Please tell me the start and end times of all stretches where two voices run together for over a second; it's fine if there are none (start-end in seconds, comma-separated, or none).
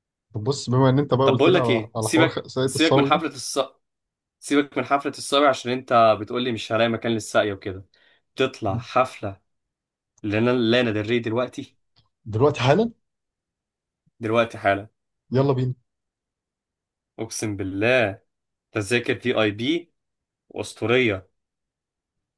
1.2-3.2